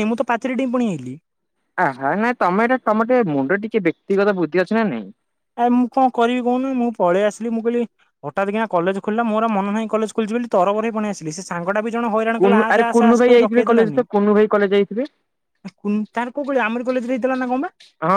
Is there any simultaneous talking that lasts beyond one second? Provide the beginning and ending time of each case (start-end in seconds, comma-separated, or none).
12.4-14.0